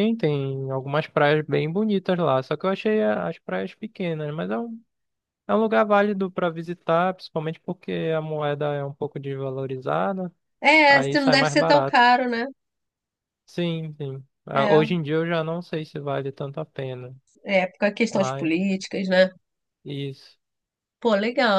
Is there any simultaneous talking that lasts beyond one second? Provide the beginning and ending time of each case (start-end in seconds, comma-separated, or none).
10.9-12.1